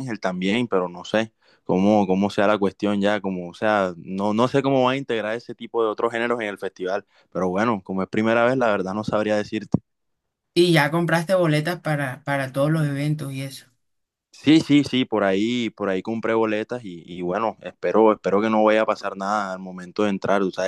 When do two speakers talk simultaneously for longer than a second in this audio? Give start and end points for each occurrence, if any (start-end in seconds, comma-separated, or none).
none